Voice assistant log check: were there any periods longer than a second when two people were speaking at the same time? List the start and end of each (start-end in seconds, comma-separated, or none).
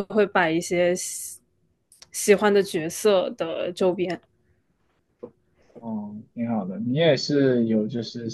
none